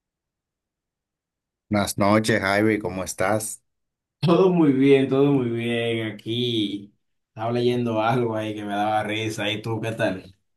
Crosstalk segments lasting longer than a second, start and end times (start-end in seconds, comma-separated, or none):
none